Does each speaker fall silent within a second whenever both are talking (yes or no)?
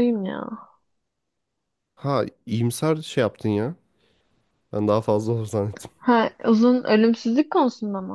yes